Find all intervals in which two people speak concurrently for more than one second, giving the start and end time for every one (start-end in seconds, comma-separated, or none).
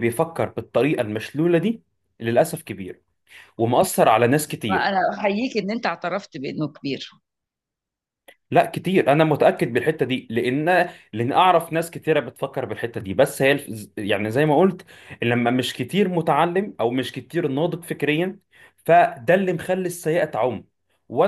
none